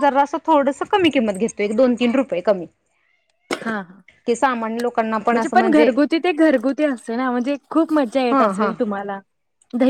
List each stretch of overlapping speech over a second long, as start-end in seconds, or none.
none